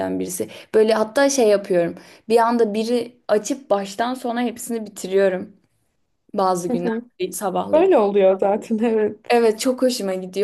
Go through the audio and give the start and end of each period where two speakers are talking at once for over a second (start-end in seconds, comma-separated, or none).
none